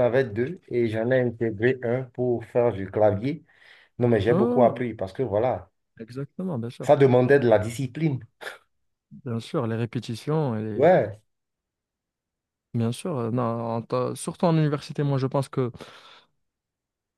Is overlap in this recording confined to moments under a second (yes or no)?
yes